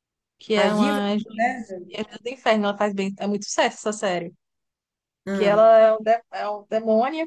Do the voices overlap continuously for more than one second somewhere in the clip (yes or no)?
yes